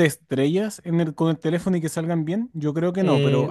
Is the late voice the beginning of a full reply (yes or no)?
yes